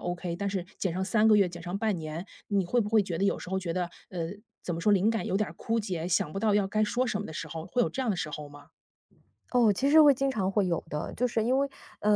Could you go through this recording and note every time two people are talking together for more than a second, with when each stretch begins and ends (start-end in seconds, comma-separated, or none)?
none